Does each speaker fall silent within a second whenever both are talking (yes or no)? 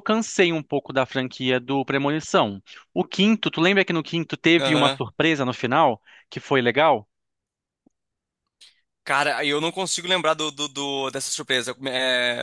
yes